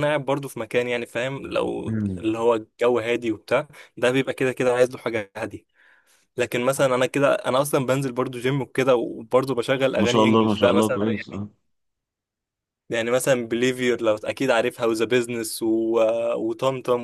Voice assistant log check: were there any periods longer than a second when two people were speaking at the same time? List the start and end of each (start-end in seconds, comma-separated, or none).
10.0-11.4